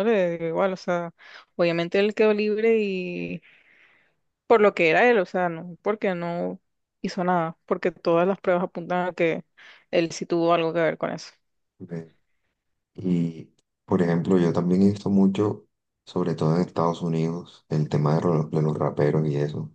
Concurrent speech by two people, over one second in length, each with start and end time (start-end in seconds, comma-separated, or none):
none